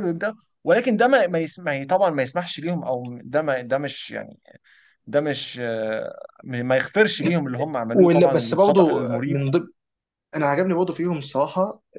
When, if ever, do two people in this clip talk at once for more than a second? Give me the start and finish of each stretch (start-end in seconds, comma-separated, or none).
7.9-9.4